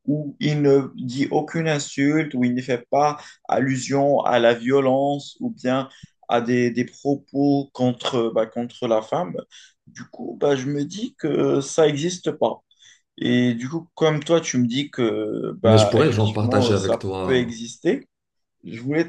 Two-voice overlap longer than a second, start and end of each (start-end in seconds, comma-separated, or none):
15.6-17.6